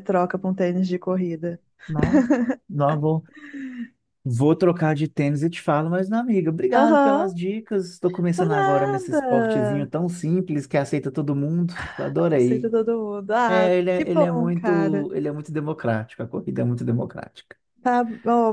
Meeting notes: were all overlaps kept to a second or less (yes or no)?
no